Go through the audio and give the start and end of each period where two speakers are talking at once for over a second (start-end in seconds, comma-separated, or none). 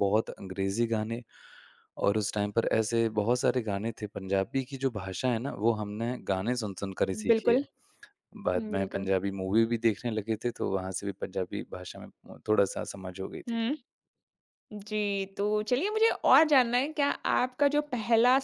none